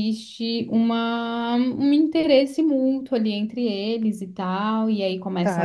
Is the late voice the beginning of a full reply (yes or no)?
yes